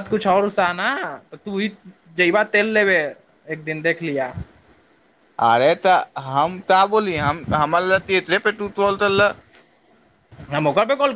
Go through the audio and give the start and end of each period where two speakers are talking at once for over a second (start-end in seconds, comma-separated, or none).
none